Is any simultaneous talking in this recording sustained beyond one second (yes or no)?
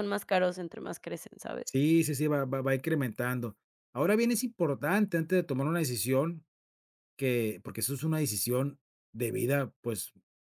no